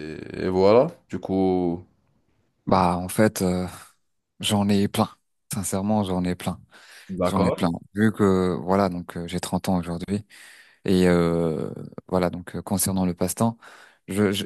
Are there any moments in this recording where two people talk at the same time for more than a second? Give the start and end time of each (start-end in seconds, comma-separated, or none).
none